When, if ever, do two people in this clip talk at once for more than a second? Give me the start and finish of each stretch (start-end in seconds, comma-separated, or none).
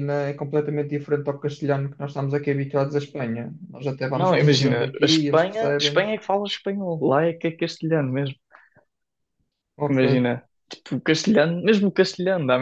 4.2-6.1